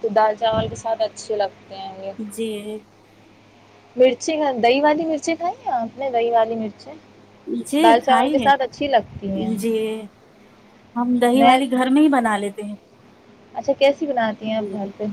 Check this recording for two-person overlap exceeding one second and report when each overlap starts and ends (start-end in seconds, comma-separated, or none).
7.8-9.5